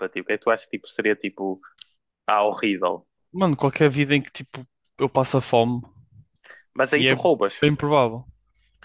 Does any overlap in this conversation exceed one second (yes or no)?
no